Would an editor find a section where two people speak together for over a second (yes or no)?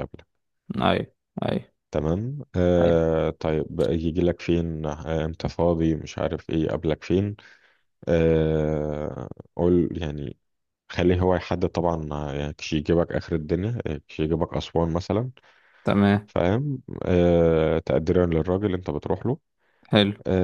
no